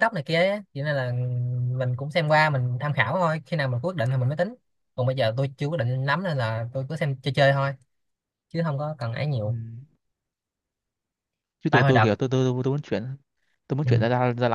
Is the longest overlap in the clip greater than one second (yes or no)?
no